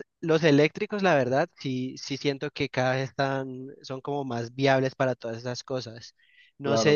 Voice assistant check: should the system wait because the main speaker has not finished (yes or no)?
yes